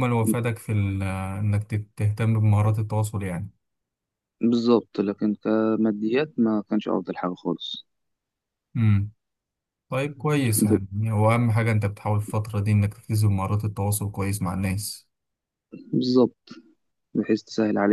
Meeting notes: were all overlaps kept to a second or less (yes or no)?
yes